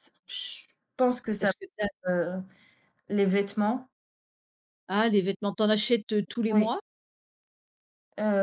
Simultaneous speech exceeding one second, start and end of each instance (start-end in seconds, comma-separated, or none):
none